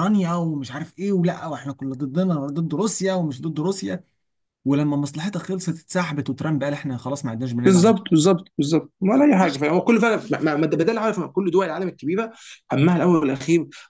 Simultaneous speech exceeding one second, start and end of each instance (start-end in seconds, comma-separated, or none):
none